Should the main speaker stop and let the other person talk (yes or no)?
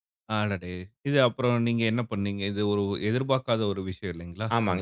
yes